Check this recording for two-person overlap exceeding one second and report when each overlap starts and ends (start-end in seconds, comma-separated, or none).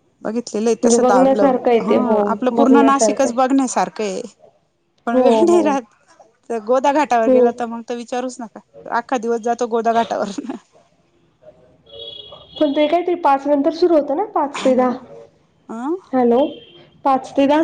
0.6-3.4